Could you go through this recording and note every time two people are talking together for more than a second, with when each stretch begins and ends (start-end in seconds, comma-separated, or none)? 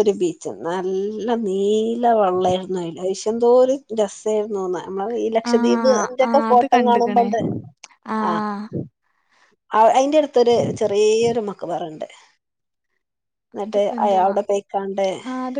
5.5-7.3